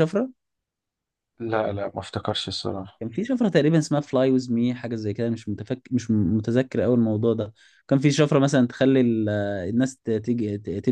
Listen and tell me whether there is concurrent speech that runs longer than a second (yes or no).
no